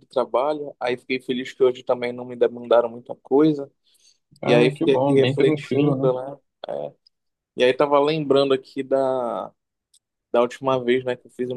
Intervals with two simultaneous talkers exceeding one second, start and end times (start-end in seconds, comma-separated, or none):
4.4-6.1